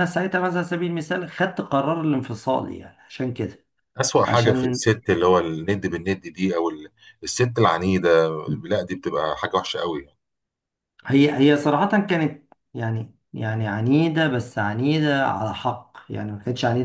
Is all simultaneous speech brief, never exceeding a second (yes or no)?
yes